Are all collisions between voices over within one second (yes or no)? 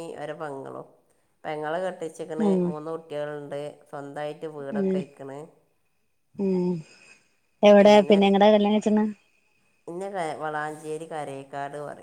yes